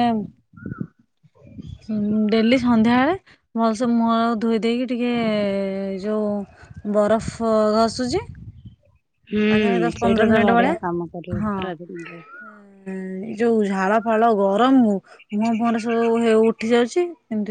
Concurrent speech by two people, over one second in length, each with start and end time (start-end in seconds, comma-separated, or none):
none